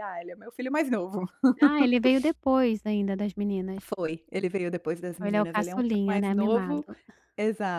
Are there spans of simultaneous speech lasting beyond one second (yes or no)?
yes